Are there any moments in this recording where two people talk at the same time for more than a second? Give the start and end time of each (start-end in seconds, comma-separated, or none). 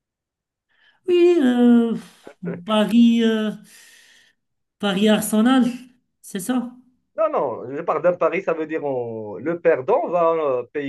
none